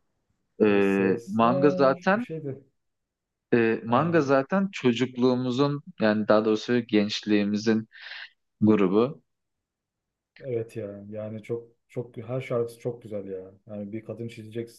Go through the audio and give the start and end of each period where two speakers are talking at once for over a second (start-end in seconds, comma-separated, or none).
0.7-2.2